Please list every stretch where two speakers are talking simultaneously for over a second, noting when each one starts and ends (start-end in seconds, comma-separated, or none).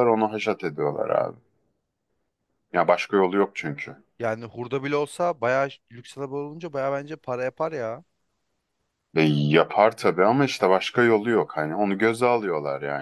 none